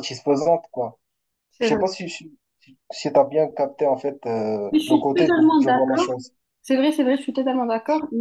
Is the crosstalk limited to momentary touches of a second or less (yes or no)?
no